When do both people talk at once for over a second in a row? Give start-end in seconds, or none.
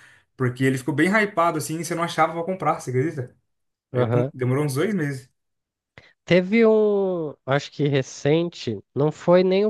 none